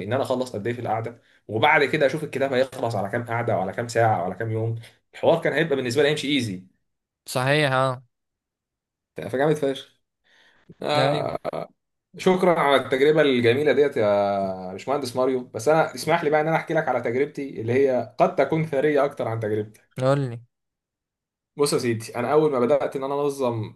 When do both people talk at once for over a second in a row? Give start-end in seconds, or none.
none